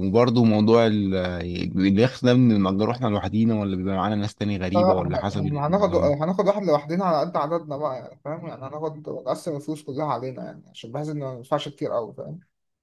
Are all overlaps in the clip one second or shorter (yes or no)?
no